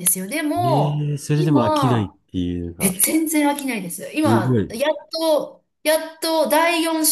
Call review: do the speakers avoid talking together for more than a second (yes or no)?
no